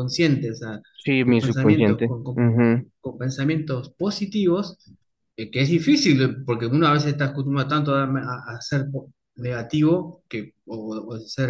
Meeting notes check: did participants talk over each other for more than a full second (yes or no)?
yes